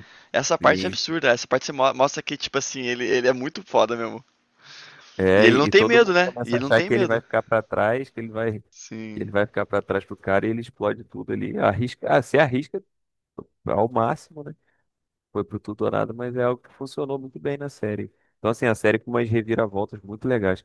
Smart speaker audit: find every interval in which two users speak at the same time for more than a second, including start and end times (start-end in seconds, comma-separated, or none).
5.3-7.2